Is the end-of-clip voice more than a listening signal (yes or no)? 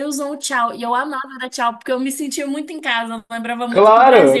yes